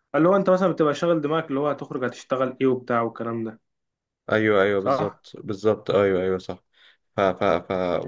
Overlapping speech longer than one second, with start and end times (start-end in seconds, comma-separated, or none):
none